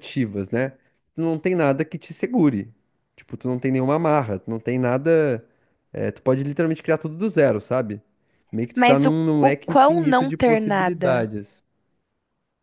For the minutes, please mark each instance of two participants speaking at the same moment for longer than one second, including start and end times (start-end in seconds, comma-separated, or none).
8.7-11.3